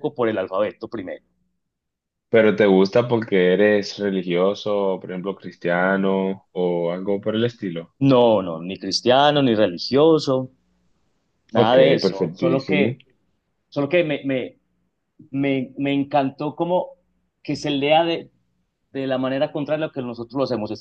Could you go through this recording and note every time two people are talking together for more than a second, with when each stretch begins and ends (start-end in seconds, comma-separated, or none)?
11.5-13.0